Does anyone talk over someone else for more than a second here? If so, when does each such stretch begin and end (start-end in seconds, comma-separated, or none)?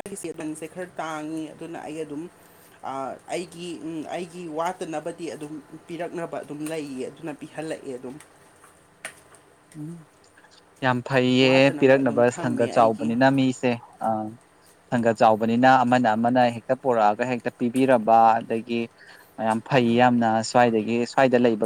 11.4-13.1